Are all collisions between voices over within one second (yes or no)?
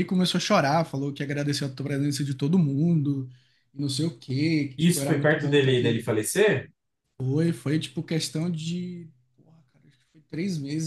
no